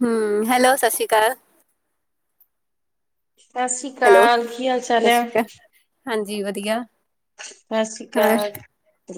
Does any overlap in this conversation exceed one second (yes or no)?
no